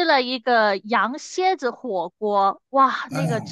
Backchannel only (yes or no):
yes